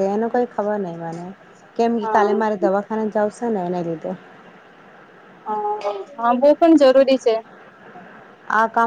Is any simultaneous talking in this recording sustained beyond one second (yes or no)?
no